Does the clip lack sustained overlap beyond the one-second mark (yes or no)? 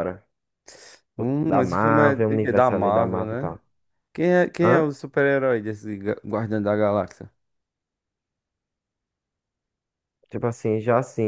no